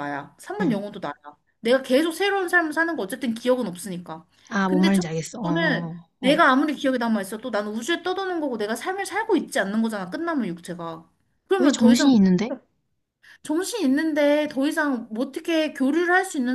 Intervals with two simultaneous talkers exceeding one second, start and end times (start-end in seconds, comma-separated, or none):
4.7-6.4